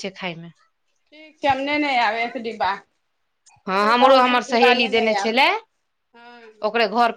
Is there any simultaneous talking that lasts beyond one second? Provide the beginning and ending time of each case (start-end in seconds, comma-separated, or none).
none